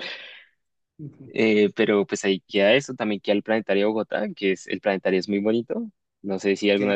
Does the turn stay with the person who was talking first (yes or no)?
no